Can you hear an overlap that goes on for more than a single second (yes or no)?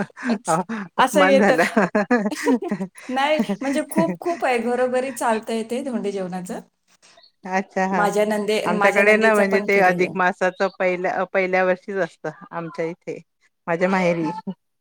yes